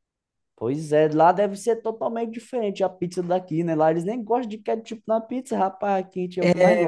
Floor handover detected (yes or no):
yes